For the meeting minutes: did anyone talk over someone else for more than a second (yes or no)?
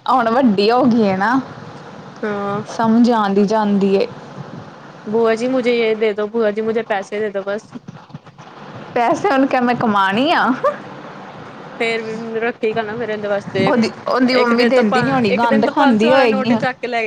yes